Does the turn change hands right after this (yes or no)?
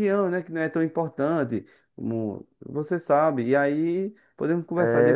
yes